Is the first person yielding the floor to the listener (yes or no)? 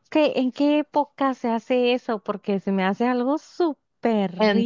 yes